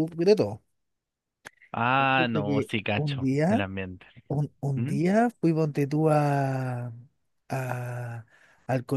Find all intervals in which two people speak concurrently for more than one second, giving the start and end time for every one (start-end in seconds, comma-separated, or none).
2.0-3.6